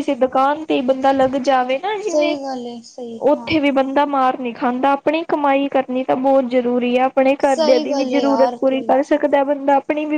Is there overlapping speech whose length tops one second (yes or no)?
yes